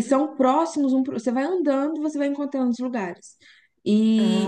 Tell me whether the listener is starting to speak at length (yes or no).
no